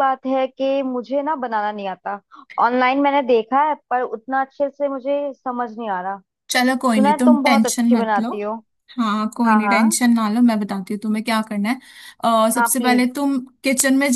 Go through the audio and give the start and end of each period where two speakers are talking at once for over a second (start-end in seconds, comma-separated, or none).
6.9-8.3